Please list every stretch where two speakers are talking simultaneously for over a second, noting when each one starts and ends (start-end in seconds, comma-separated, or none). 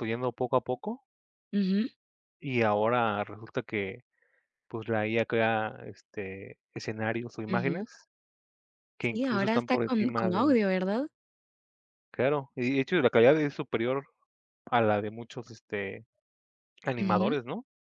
9.1-10.6